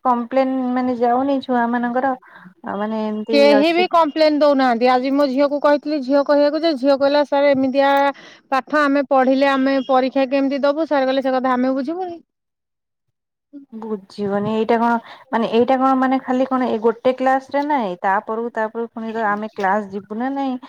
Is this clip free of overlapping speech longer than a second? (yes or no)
yes